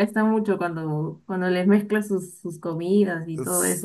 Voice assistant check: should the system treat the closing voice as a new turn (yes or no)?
yes